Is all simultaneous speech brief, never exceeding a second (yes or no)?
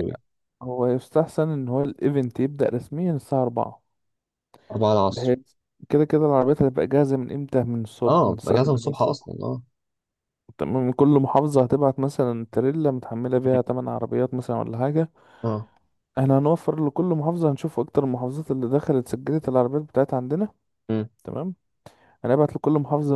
no